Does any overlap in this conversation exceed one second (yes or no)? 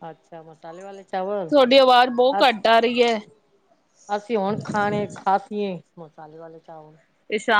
no